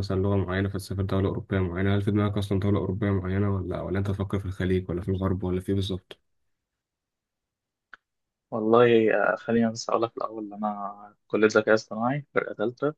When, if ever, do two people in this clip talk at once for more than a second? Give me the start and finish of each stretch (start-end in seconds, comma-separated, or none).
none